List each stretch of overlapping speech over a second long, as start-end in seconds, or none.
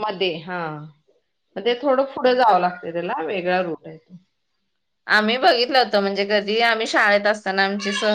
none